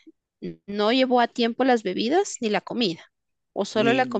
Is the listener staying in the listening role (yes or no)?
no